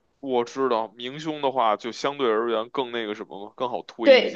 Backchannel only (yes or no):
no